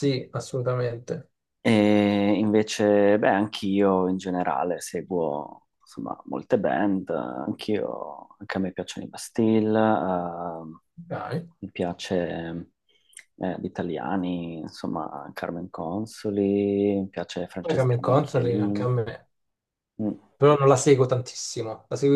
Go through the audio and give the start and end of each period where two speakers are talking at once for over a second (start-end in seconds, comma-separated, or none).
17.6-18.9